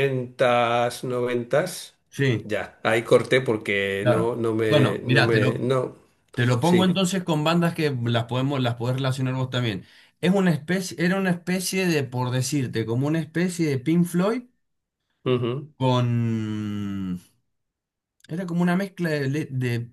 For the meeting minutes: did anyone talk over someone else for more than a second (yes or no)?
yes